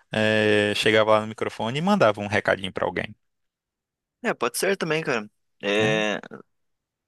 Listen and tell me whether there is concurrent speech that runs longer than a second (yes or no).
no